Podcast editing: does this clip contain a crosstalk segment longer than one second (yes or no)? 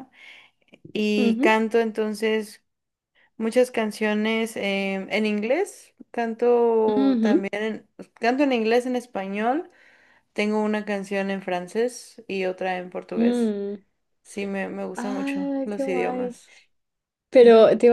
yes